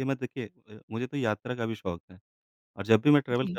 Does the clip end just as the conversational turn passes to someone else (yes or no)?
no